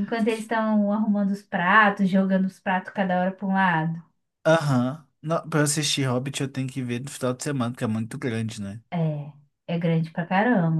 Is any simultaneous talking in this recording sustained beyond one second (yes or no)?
no